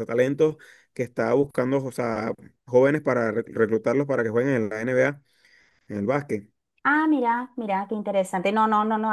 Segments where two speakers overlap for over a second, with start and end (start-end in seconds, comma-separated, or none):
none